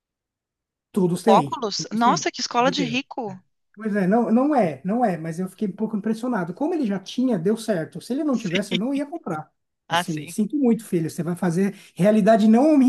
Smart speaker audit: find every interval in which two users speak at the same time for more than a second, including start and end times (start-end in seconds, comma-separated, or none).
1.1-3.4